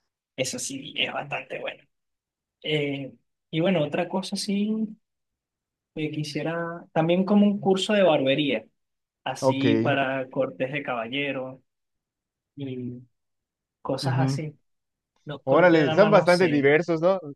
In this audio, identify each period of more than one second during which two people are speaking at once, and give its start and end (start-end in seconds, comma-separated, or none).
15.4-16.7